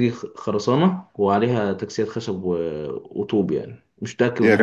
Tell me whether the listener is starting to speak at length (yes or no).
yes